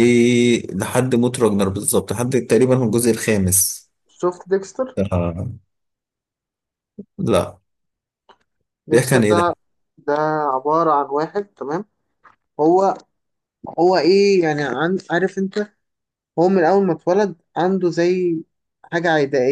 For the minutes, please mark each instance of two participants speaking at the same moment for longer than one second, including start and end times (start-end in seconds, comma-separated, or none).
none